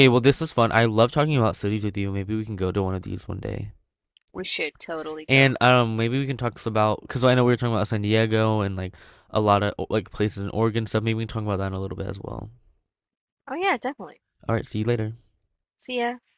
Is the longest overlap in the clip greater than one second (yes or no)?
no